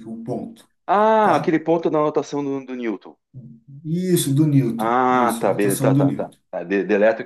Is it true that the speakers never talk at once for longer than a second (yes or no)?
no